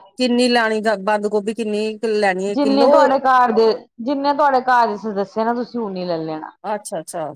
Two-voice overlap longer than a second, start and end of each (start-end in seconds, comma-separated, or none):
none